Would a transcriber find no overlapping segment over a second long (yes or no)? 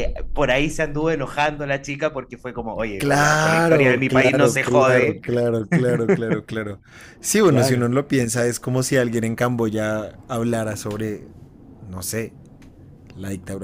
no